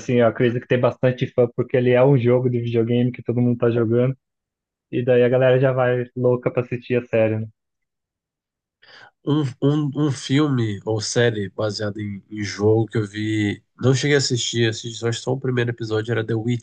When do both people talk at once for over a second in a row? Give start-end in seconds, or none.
none